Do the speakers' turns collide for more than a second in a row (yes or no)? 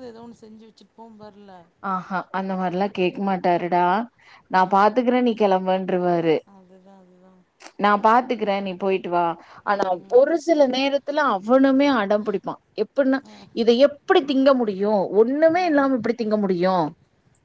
no